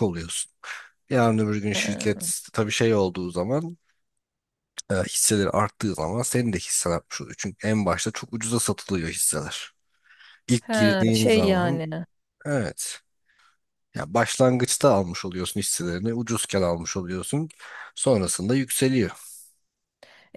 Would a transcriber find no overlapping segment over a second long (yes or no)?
no